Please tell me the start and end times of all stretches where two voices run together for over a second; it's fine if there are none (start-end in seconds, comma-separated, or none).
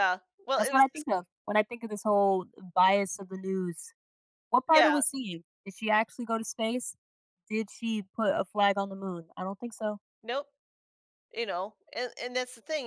none